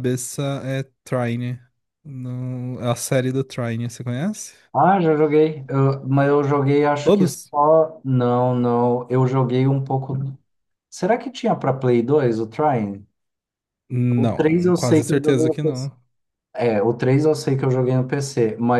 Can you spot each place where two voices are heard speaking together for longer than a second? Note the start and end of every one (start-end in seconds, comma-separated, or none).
14.2-15.6